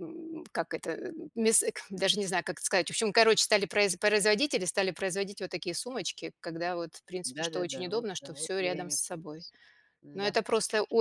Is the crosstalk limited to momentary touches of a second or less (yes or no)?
no